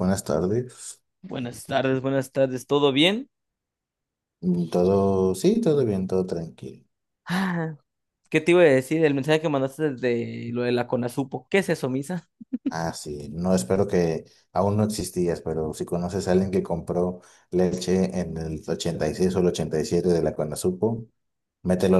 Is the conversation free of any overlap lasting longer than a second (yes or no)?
yes